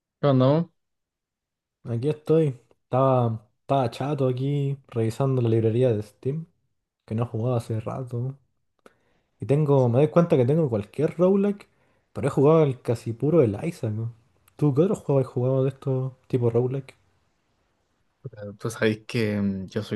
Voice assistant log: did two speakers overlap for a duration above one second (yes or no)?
no